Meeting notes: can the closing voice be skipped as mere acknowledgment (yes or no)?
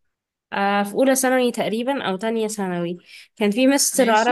yes